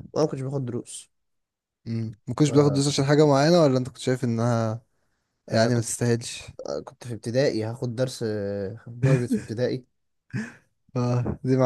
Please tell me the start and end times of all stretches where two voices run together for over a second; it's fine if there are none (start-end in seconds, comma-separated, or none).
none